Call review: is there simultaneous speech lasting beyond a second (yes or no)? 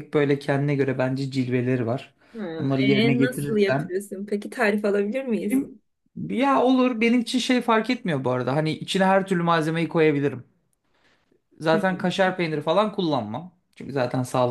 yes